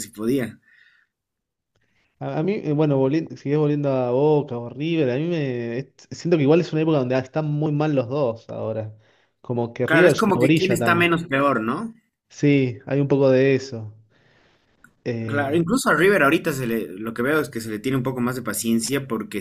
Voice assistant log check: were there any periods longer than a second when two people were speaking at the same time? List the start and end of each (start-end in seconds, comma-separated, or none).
9.8-11.1